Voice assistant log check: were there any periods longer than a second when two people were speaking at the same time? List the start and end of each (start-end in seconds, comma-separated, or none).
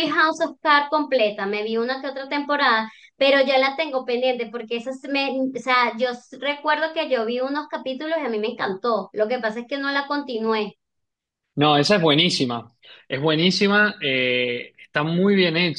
none